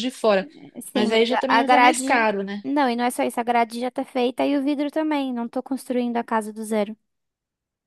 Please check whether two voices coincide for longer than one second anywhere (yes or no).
yes